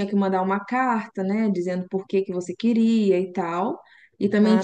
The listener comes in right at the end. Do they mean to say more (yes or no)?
no